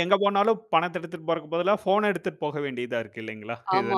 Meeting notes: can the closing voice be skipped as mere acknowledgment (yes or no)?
no